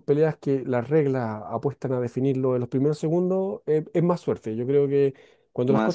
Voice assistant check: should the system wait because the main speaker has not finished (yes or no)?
yes